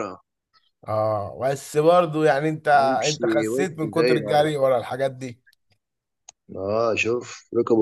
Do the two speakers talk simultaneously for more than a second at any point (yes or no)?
yes